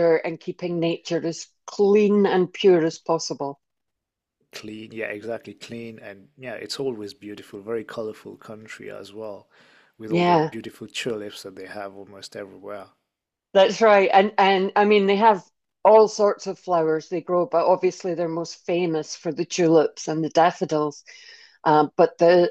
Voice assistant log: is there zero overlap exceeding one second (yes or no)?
yes